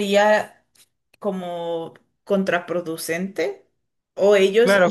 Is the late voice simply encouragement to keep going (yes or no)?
no